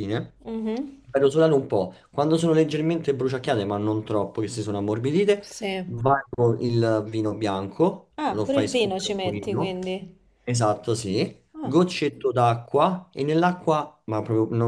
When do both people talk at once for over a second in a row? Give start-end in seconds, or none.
8.2-9.8